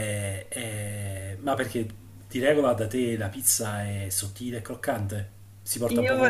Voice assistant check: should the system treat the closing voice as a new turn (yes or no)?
yes